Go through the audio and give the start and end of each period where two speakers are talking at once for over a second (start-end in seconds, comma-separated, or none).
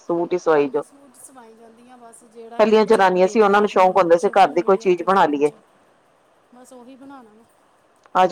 3.6-5.4